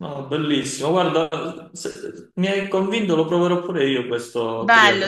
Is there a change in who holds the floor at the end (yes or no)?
yes